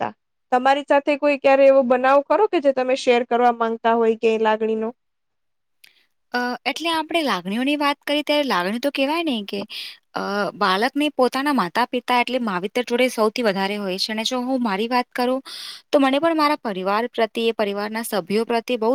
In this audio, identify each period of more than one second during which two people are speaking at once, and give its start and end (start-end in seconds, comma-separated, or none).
none